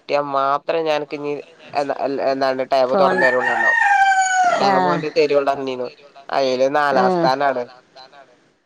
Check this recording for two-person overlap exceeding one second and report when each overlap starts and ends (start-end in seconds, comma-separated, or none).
none